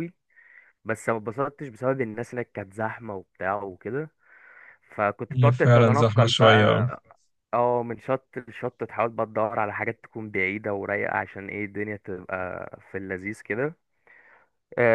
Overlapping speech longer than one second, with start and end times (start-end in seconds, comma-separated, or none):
5.3-6.9